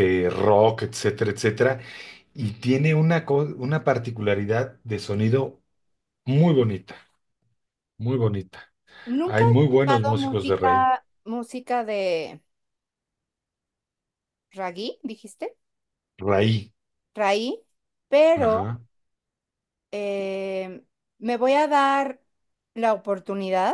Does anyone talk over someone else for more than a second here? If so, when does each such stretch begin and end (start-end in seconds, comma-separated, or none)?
9.2-10.9